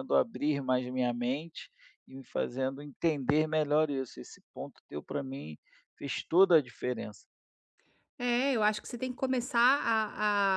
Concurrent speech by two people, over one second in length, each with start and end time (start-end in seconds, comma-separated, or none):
none